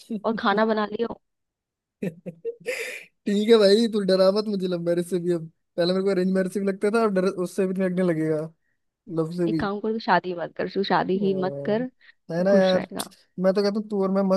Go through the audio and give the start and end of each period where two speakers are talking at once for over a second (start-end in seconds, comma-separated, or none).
11.2-12.9